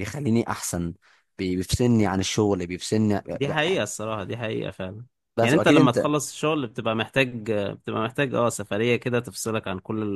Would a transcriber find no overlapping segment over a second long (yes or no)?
yes